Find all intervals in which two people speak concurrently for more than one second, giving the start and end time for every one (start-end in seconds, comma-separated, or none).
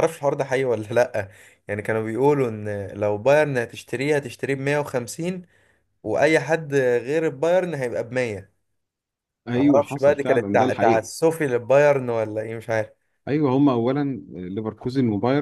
9.6-11.1